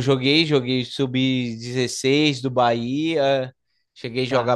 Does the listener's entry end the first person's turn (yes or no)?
no